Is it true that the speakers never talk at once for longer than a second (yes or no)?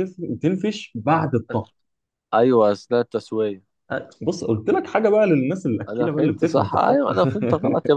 no